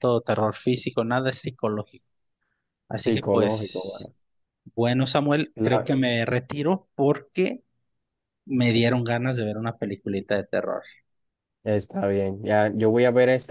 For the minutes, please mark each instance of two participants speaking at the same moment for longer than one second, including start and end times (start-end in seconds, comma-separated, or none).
2.9-4.1